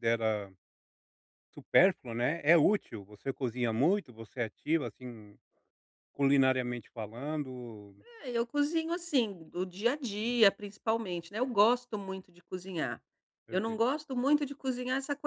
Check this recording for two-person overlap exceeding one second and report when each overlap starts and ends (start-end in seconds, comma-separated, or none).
none